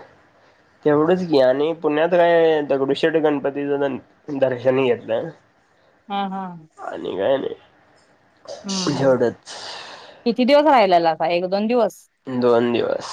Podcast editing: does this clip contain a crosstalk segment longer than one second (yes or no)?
no